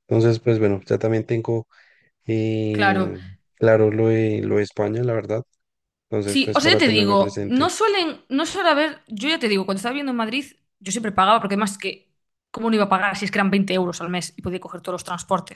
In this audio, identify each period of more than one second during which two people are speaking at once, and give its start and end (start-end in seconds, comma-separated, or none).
6.2-7.7